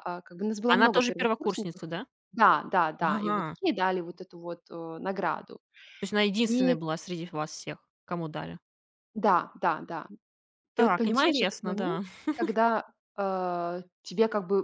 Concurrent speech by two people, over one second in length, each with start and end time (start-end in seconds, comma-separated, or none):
0.7-1.9, 10.8-12.0